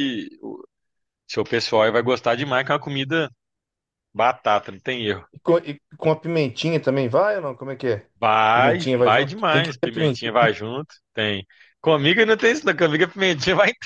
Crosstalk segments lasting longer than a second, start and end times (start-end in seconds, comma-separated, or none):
8.5-10.3